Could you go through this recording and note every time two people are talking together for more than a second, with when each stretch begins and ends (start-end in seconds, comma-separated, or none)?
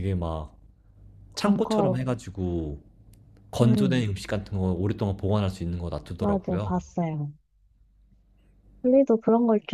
none